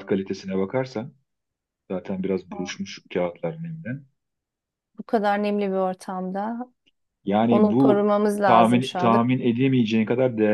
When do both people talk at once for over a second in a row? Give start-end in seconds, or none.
7.5-9.2